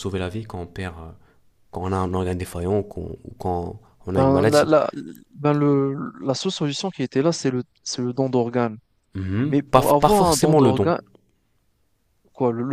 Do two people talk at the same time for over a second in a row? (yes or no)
yes